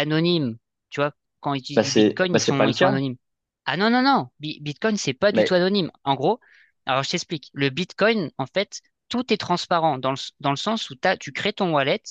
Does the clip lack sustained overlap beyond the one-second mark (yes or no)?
no